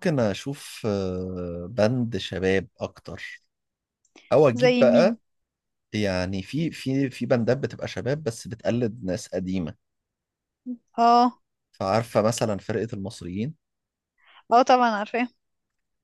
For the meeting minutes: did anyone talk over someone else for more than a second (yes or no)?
no